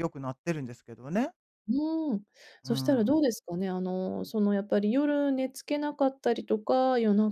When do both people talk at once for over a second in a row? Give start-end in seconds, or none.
none